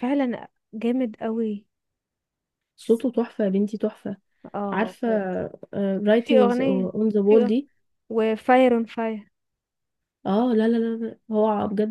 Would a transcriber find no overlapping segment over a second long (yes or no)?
no